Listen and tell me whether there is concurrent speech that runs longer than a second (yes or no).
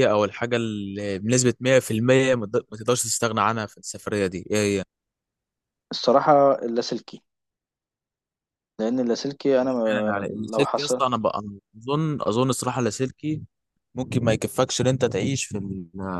yes